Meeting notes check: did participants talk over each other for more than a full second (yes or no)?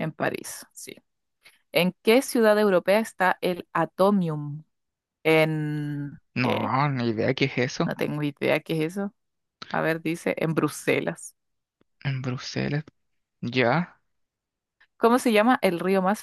no